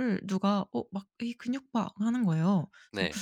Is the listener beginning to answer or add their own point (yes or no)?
no